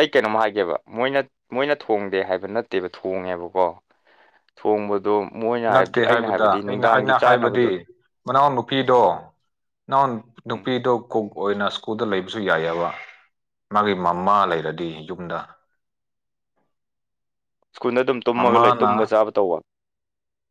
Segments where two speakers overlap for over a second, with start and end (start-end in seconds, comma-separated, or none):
5.7-7.7